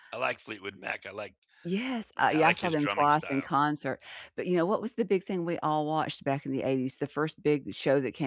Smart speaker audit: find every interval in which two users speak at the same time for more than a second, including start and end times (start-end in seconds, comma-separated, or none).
2.2-3.5